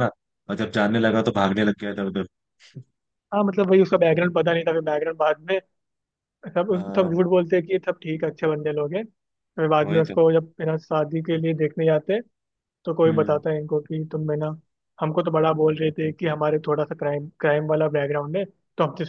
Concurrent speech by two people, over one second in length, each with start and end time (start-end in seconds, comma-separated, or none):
none